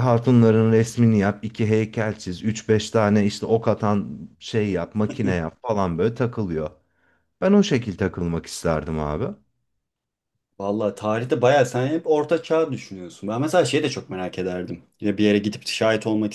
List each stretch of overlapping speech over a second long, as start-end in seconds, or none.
none